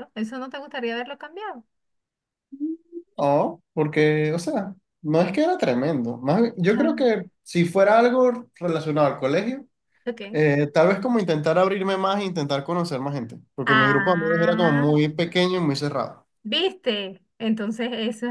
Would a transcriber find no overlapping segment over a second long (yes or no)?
no